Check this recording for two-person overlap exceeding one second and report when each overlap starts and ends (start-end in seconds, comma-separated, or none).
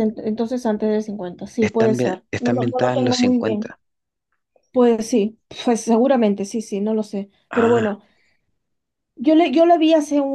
1.6-3.8